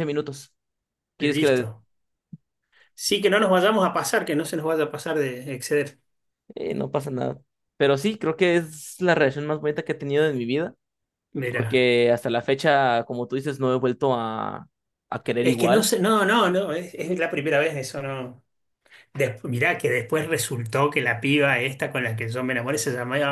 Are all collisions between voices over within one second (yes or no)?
yes